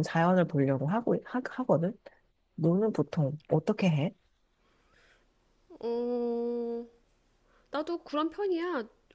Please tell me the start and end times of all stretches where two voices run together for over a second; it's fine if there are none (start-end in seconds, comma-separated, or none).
none